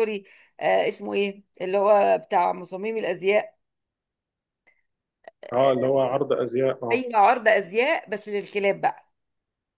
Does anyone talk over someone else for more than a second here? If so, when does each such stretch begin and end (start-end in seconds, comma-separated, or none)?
none